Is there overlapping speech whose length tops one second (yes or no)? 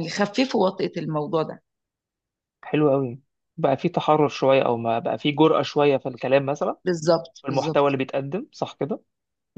no